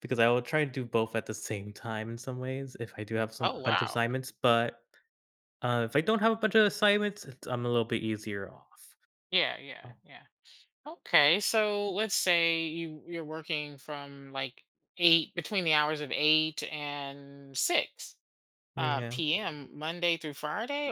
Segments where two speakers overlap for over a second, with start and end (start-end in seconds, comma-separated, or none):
none